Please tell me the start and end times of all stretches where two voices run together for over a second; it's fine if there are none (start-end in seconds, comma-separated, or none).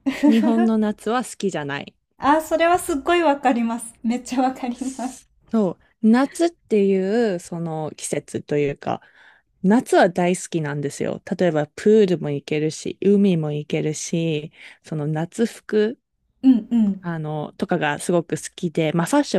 none